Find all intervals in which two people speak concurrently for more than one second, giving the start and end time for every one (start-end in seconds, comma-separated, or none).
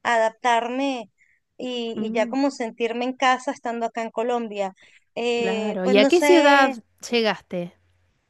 5.3-6.7